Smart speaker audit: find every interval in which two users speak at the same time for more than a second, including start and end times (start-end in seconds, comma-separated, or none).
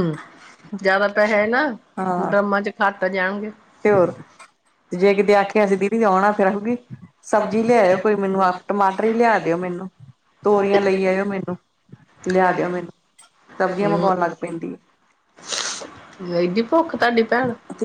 none